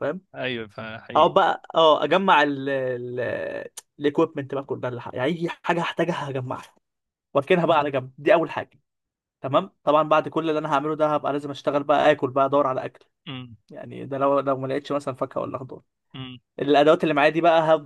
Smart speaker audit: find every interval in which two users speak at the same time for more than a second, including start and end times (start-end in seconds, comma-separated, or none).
none